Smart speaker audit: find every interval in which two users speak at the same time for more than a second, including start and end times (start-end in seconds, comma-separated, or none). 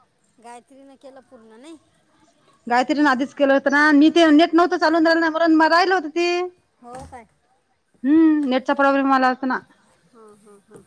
none